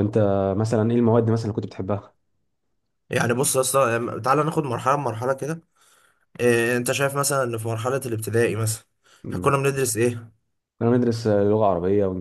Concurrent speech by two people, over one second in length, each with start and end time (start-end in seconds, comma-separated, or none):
none